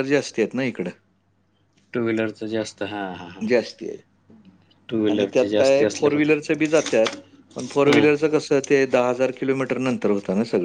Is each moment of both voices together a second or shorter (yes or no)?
yes